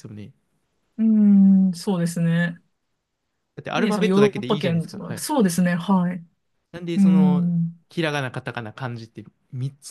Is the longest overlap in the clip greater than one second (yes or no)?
yes